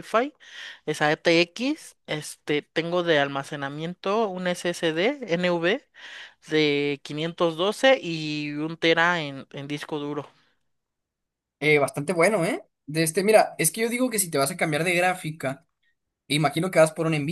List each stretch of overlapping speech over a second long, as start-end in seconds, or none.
none